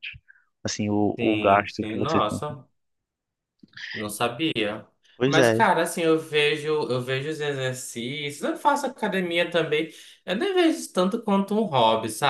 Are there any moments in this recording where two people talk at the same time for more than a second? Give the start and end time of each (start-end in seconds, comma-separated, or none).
1.2-2.4